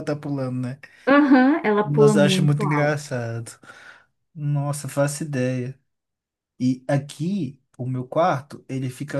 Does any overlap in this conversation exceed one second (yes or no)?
yes